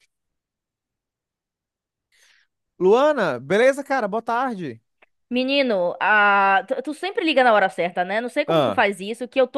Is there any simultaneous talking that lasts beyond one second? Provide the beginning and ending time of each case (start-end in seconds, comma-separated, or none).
none